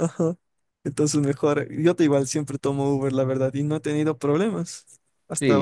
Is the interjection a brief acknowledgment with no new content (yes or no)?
no